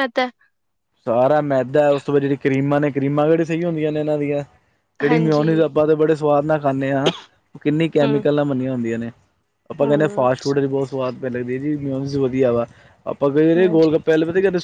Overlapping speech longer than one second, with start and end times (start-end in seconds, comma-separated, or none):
none